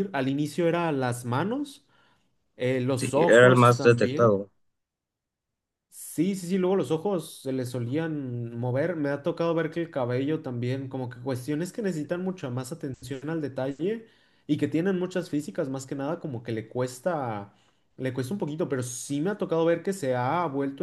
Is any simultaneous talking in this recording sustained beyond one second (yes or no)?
yes